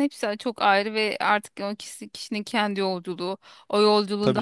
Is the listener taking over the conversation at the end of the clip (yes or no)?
no